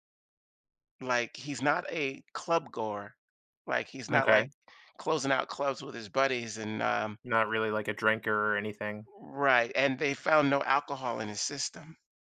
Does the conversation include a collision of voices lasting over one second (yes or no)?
no